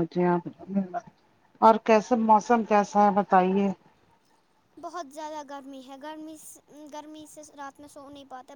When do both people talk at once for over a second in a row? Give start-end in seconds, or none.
none